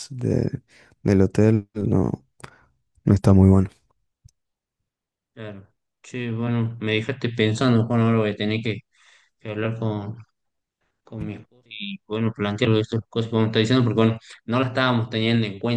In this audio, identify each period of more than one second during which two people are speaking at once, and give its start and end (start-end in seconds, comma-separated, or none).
none